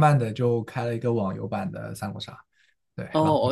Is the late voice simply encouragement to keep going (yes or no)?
no